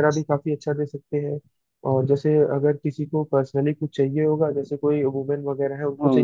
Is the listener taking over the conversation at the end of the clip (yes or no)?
no